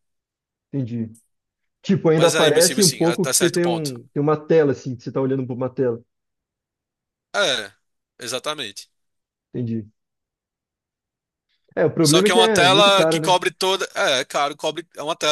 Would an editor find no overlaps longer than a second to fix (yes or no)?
no